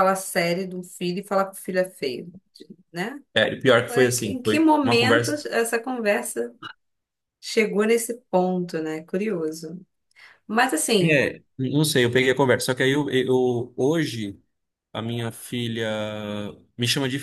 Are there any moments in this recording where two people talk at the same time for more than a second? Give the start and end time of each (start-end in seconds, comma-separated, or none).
3.9-5.4